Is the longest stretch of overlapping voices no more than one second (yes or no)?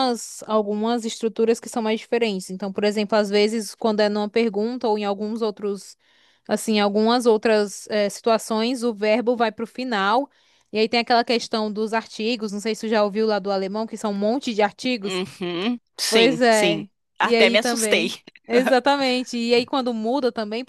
no